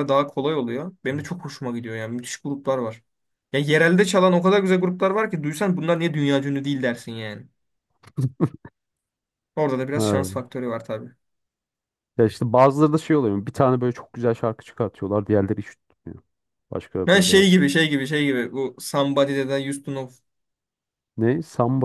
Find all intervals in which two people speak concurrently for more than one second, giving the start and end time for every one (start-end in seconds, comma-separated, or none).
none